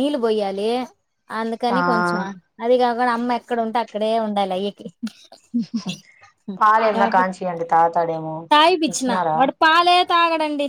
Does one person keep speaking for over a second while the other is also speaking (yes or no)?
no